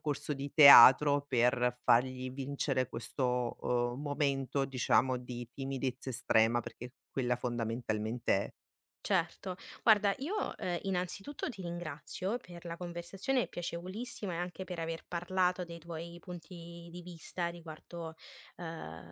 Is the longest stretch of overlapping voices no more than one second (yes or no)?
yes